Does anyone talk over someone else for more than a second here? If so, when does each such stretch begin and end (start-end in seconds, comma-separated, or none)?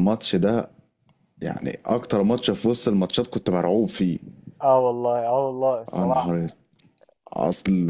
none